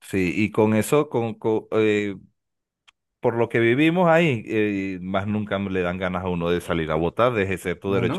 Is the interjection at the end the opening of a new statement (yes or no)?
no